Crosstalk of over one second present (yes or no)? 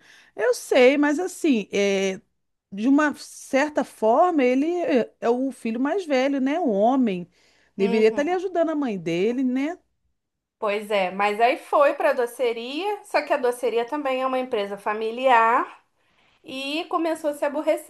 no